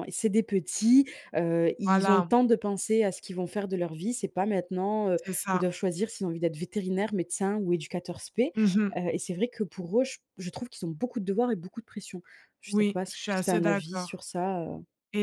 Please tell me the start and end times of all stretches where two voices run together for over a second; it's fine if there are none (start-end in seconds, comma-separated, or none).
12.7-14.2